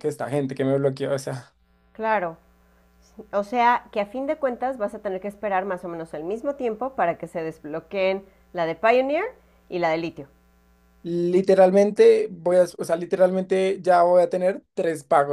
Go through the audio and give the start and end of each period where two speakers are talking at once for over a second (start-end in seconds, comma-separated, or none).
none